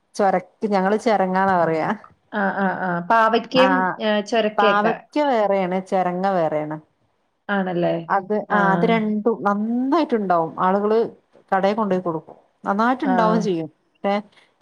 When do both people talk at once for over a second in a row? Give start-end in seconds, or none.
none